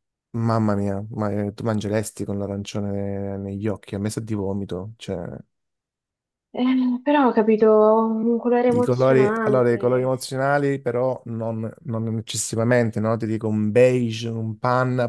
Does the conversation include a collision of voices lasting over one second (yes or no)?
yes